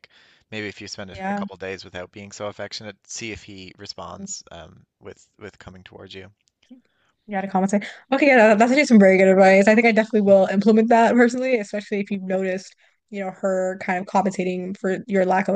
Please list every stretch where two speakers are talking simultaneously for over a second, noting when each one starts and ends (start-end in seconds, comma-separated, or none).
none